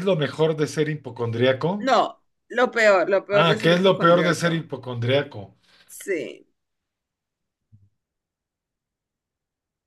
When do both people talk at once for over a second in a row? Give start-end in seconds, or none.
3.3-4.7